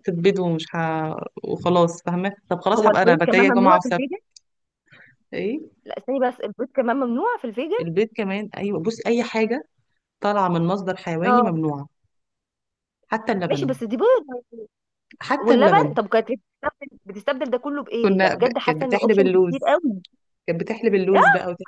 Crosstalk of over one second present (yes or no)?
yes